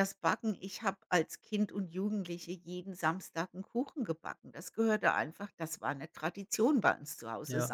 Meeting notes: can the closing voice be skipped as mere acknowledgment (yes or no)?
yes